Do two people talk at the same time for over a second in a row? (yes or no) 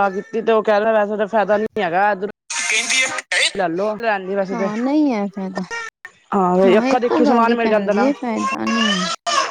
yes